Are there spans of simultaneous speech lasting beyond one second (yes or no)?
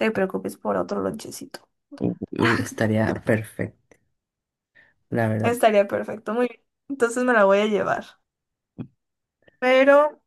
no